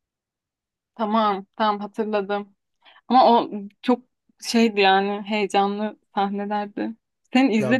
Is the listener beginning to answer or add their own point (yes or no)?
no